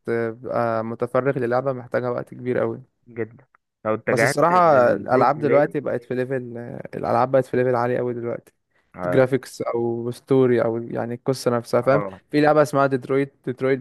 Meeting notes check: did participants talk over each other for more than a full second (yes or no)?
yes